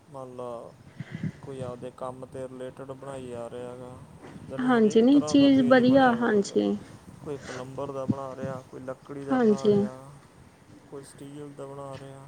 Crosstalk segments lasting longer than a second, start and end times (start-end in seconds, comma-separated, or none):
4.7-6.6